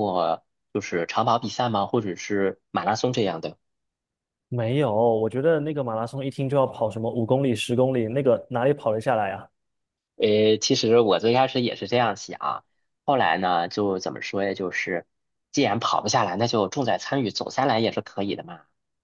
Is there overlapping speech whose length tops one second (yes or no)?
no